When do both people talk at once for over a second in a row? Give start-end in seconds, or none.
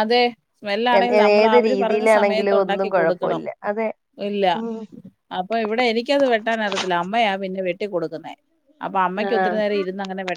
1.4-3.4